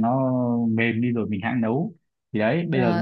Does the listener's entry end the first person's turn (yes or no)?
no